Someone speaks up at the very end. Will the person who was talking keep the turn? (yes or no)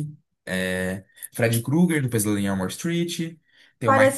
no